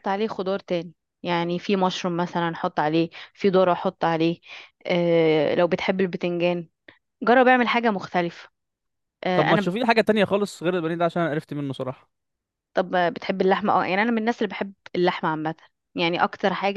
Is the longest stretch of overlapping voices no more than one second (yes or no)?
yes